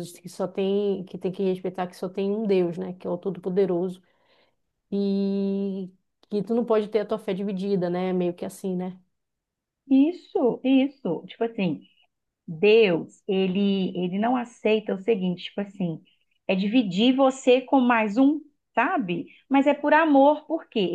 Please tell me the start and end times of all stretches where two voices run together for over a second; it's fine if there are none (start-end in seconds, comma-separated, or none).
none